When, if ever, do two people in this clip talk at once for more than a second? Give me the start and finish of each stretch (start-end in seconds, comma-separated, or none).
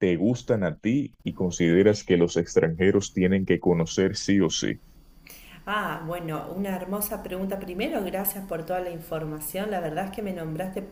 none